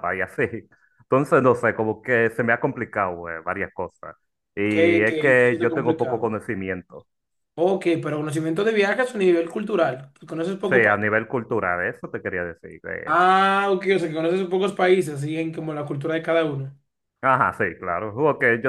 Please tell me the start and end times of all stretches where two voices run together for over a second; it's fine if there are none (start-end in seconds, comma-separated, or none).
4.7-6.3